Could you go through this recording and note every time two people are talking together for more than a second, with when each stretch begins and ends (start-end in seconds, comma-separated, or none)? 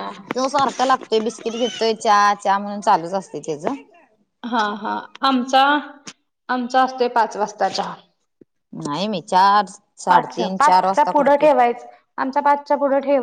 none